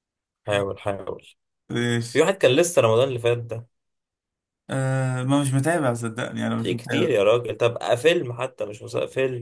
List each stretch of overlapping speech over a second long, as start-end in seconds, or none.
none